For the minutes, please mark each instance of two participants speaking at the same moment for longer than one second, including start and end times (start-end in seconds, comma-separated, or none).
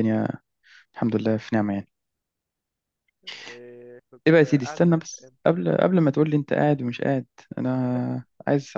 4.3-5.7